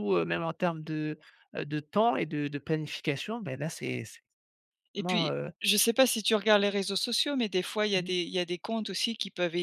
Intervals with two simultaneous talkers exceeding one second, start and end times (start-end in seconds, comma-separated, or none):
none